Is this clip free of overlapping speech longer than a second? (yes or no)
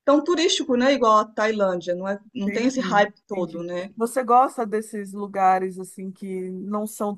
no